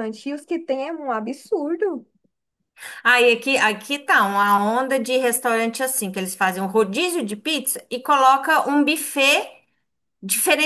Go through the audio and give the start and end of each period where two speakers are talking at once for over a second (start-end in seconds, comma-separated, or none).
none